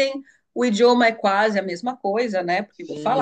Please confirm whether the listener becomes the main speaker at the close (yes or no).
no